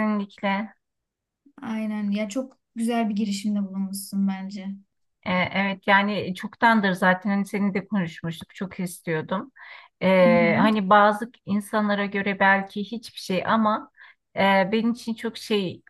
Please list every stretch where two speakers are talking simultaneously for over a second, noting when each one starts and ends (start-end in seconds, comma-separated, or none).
none